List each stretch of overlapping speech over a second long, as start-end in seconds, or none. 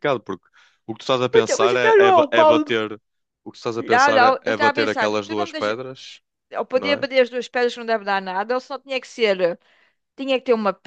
1.3-2.7, 3.8-5.7